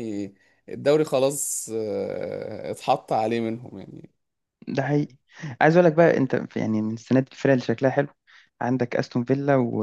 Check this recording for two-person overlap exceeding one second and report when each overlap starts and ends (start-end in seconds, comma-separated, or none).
none